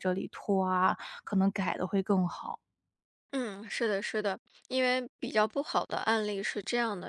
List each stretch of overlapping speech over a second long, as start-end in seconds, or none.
none